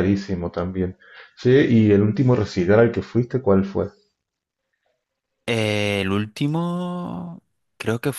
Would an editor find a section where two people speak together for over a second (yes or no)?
no